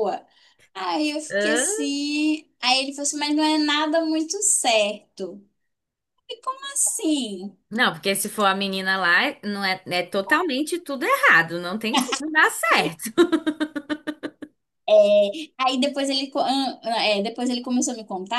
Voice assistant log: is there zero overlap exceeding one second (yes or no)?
yes